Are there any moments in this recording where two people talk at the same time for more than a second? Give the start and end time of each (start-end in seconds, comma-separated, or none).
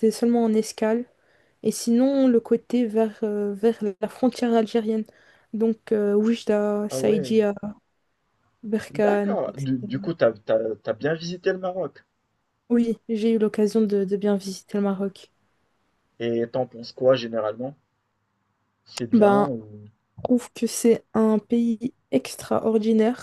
8.9-10.1